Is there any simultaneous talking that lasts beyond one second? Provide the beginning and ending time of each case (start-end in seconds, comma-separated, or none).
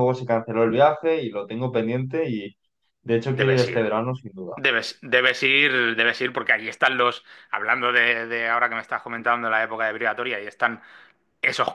none